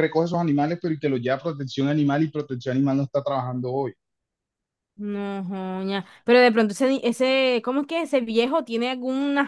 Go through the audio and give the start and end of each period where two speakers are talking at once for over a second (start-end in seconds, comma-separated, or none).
none